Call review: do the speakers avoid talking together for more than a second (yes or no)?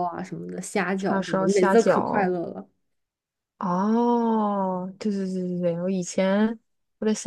no